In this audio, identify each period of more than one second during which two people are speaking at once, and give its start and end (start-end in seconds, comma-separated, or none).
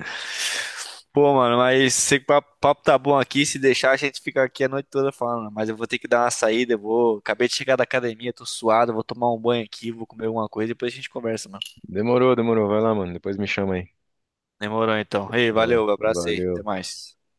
15.2-16.6